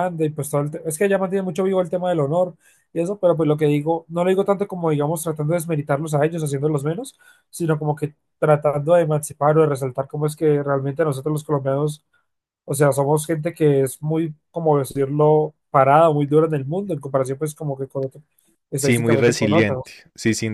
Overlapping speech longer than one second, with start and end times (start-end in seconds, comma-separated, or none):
18.7-19.9